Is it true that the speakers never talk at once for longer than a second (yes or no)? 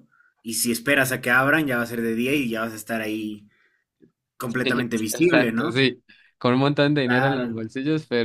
no